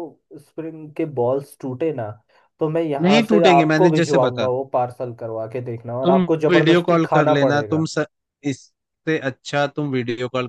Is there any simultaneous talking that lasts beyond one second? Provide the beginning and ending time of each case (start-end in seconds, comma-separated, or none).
3.0-4.5, 6.0-7.9